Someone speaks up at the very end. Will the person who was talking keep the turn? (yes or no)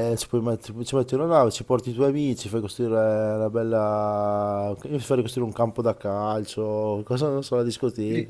no